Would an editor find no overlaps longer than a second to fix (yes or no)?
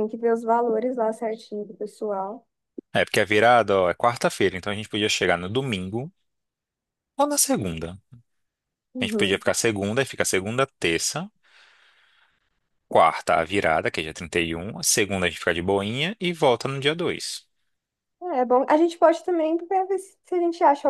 yes